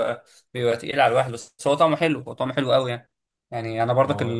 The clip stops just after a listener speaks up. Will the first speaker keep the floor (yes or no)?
yes